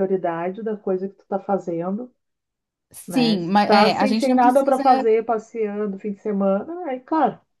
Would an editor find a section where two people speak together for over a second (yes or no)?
yes